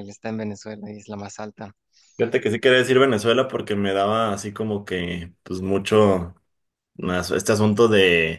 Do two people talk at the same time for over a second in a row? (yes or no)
no